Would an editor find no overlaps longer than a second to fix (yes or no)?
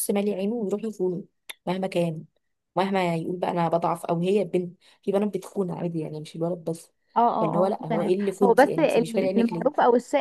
no